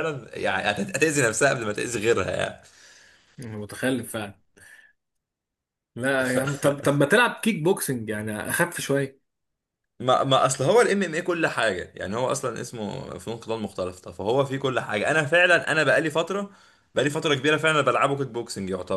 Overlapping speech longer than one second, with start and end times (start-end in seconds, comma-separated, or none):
none